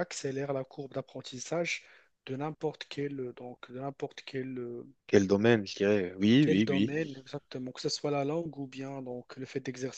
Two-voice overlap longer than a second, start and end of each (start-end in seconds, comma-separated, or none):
none